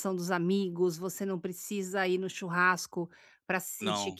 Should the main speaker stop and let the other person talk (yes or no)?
no